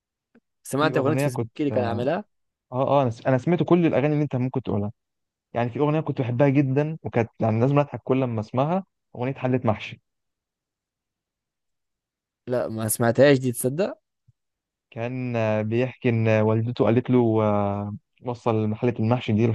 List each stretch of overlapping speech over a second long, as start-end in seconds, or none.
0.7-2.1